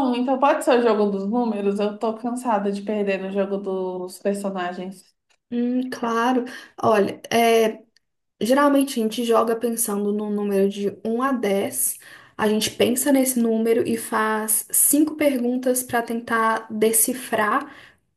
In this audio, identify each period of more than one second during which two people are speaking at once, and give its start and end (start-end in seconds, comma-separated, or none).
none